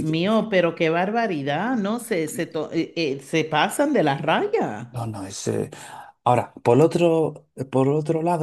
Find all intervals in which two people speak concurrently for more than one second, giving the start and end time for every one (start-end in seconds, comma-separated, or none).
none